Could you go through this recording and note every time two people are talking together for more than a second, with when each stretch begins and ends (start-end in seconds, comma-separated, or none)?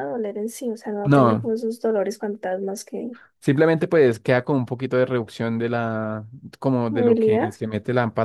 none